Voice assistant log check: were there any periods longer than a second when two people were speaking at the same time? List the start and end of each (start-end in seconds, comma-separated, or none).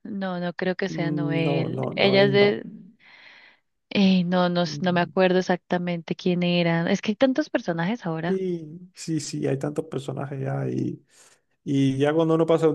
0.9-2.6